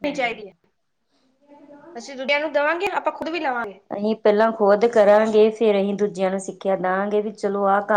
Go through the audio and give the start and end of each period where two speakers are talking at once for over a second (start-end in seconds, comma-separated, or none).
none